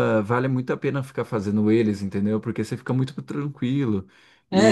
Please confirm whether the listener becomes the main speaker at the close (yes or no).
yes